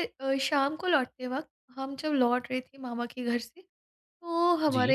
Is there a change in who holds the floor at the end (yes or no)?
no